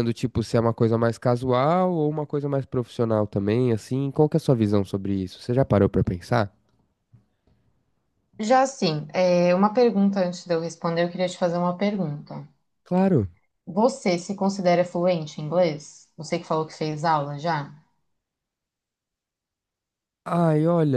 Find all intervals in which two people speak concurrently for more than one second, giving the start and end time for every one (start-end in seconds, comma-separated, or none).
none